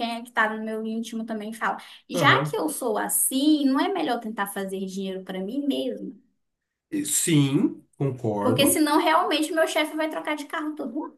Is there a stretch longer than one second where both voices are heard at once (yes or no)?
no